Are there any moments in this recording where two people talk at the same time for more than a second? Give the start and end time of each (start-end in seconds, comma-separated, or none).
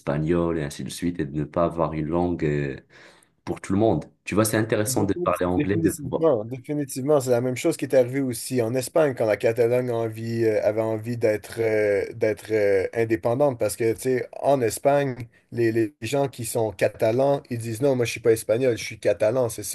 4.8-6.2